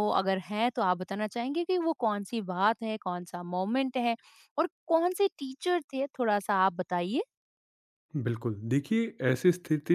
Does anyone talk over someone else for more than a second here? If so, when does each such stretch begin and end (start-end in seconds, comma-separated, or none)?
none